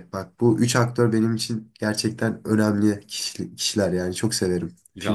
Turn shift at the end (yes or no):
yes